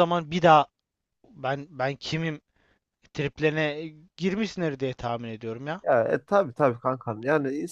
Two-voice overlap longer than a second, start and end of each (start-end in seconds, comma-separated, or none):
none